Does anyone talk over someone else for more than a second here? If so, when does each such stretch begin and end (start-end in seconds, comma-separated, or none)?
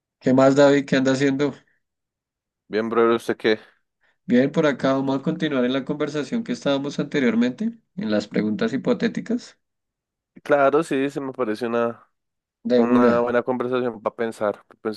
none